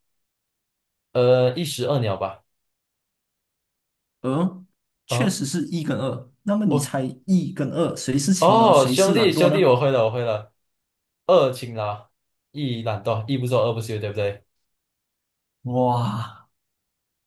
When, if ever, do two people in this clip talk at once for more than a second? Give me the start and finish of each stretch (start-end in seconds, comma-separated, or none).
8.4-9.8